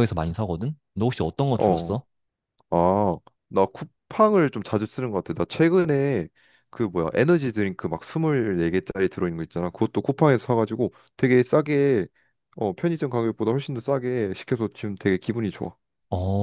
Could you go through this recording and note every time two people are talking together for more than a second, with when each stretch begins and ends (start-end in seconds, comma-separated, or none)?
none